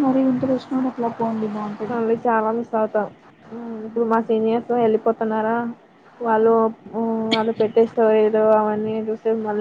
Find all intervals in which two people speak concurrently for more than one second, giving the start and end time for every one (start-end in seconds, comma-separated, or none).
none